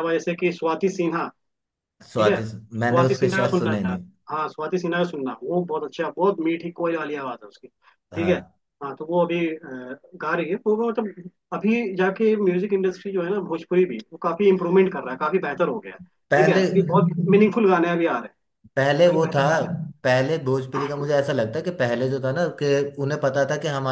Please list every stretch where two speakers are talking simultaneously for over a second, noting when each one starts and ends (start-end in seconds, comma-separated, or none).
2.1-4.0